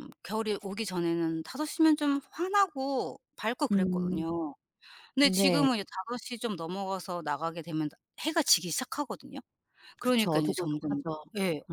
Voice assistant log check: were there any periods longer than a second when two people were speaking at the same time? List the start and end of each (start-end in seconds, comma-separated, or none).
10.0-11.2